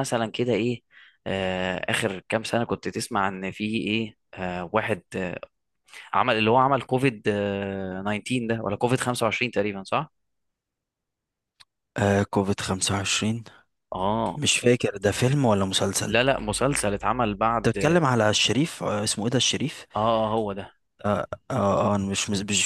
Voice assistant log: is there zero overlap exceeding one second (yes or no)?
yes